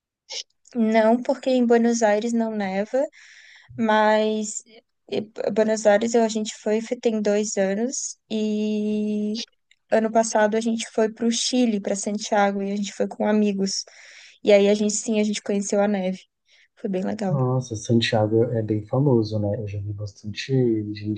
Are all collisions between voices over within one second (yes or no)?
yes